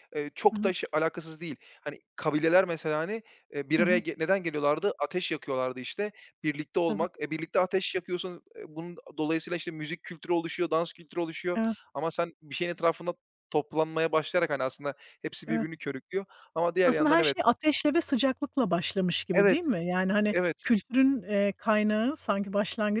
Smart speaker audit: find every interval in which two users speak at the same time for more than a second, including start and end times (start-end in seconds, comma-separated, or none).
none